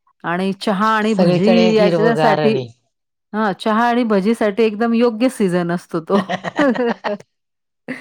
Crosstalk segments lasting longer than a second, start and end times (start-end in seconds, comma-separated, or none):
1.1-2.5